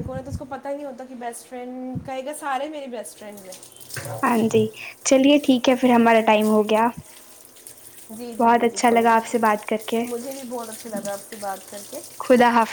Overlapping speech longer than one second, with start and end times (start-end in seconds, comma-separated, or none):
8.4-10.0